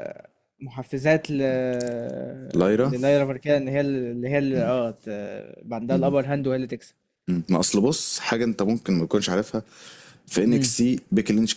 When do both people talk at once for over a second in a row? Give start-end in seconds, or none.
none